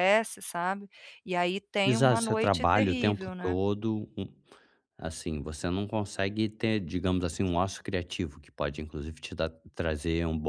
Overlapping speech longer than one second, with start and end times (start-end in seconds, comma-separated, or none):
1.9-3.6